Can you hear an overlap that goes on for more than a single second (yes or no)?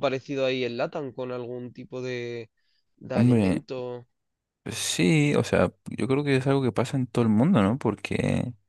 no